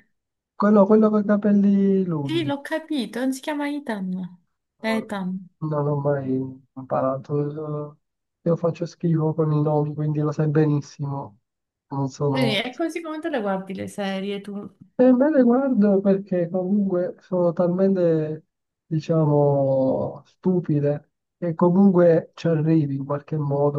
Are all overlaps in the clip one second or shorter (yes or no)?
yes